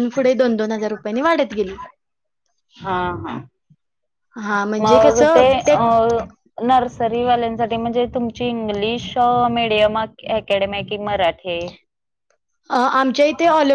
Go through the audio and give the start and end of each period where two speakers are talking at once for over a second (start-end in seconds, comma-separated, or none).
none